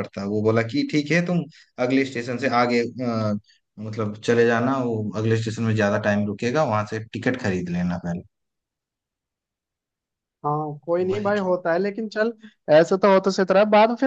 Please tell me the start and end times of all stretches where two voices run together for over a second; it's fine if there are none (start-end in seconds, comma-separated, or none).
none